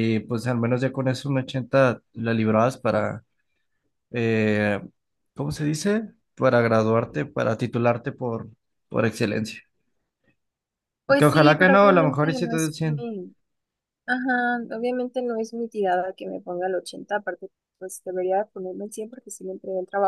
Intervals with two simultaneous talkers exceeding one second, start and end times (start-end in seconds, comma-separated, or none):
11.2-13.1